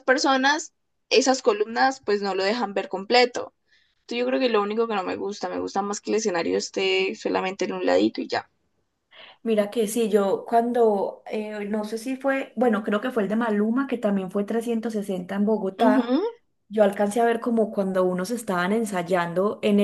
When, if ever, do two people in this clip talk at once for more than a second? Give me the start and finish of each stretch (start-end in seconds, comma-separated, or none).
none